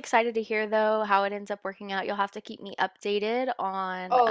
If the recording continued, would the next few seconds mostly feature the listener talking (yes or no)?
yes